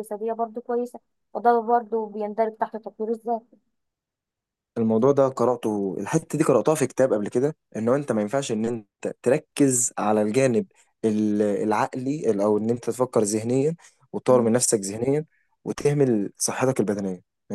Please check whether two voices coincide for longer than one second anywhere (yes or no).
no